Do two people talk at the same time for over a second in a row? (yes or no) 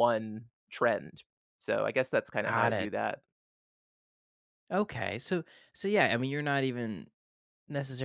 no